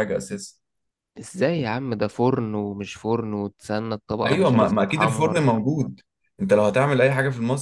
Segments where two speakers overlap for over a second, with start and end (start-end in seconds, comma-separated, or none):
4.2-5.5